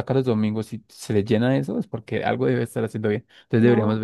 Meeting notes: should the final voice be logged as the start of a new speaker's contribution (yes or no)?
no